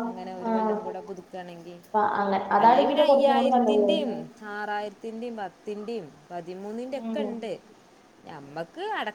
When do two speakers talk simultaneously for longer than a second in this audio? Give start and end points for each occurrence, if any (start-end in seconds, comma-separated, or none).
2.6-3.9